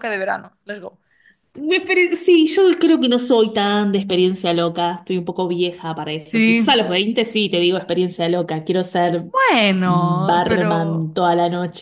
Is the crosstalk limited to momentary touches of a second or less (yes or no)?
no